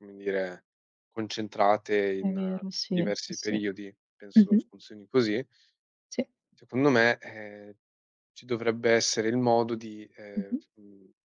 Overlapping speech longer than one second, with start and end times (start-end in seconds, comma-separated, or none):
2.2-3.6